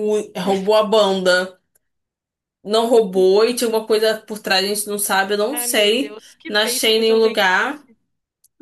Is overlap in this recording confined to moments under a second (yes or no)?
no